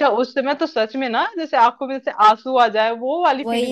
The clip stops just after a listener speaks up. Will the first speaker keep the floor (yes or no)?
no